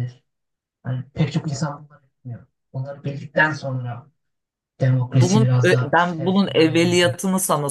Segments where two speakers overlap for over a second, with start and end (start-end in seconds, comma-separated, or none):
5.1-7.2